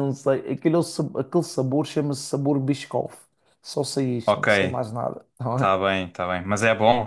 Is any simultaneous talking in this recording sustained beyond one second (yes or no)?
no